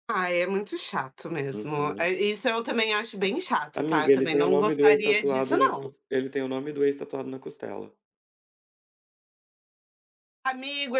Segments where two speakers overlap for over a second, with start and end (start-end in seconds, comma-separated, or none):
3.7-5.9